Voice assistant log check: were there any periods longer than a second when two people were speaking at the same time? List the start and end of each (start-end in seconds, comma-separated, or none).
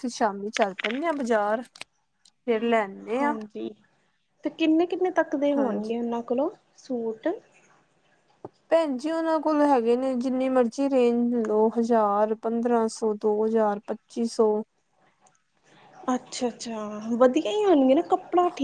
none